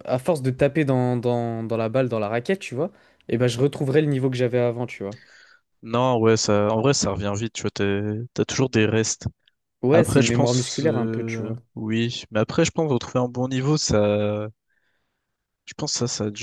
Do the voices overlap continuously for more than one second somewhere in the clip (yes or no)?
yes